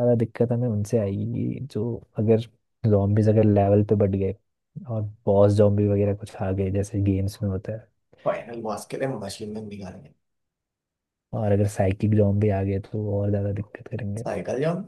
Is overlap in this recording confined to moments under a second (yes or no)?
yes